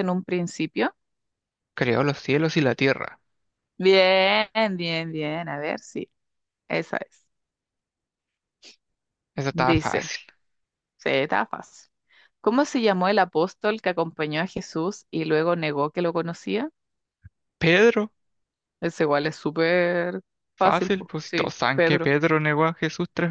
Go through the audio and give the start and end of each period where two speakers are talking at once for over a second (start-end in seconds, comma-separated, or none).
20.6-22.1